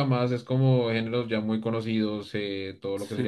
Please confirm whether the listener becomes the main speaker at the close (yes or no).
yes